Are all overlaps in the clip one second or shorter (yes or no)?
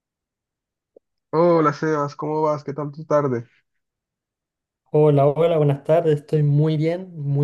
yes